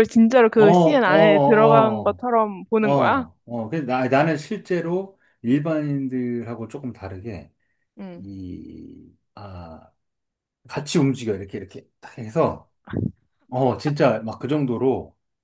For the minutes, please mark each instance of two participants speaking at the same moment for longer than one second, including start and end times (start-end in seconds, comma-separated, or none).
0.5-2.2